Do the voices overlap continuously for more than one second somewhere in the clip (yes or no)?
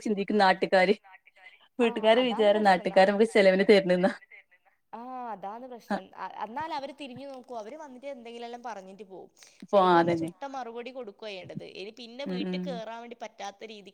yes